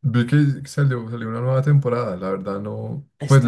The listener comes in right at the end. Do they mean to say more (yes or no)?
no